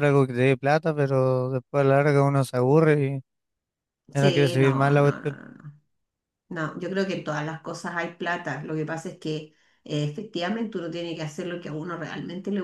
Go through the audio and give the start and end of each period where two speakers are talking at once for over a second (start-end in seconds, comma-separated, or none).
4.1-5.4